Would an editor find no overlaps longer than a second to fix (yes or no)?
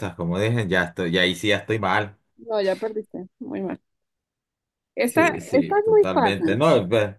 no